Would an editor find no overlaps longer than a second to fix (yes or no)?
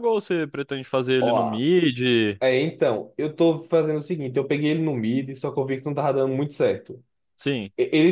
yes